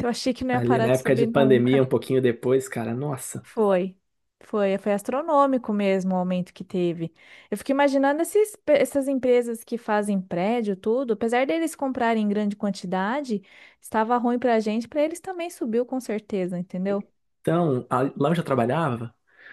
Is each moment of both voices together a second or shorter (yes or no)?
no